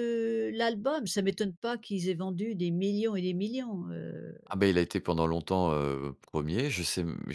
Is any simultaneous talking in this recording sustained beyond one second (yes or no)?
no